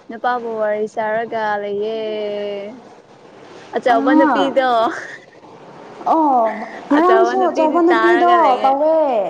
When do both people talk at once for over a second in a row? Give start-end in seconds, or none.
7.0-8.7